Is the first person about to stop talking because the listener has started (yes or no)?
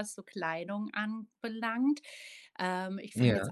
no